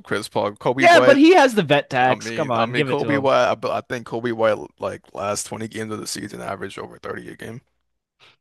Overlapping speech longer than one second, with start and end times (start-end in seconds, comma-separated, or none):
2.0-3.3